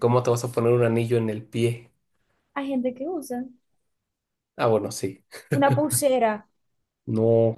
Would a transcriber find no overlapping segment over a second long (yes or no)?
yes